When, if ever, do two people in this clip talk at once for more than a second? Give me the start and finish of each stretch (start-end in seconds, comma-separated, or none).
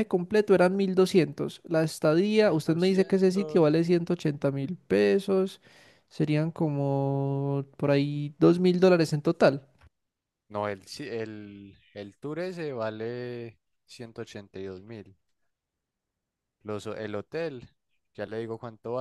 2.4-3.8